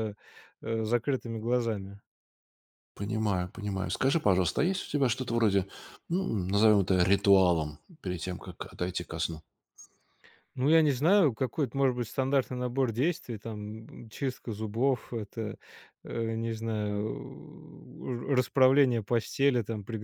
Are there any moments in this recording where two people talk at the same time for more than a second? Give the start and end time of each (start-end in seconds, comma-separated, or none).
none